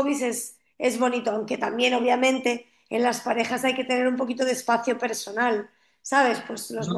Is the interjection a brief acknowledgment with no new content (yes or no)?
yes